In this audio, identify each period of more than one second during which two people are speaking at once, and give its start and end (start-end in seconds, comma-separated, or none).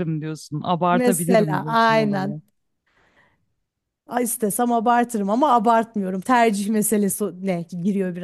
0.9-2.4